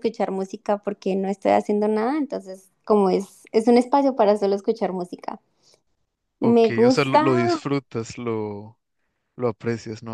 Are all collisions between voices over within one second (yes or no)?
no